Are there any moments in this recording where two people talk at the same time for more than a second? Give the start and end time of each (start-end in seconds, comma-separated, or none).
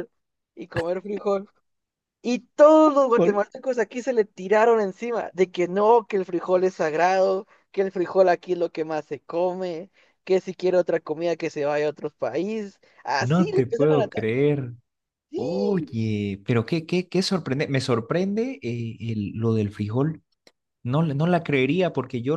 13.2-14.4